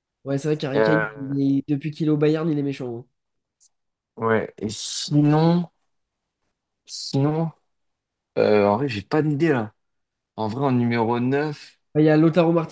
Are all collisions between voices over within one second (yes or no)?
yes